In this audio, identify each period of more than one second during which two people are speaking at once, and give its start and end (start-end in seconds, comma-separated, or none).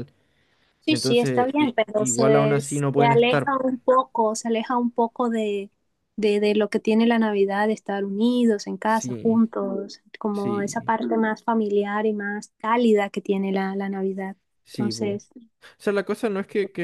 0.9-3.5